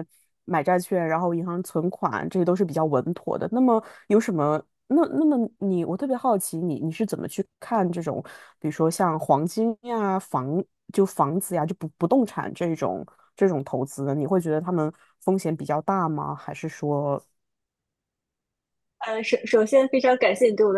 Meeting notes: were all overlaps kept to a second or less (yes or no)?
yes